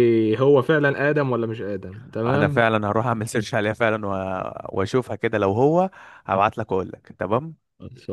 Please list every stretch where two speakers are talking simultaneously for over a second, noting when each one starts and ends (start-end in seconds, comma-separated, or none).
none